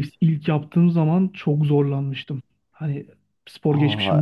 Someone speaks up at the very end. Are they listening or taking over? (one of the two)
listening